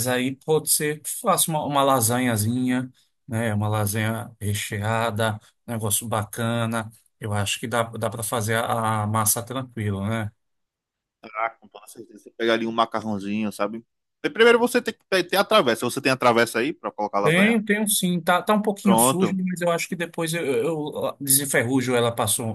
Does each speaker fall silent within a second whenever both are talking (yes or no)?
yes